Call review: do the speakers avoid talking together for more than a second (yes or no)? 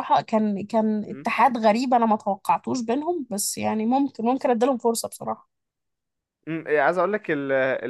yes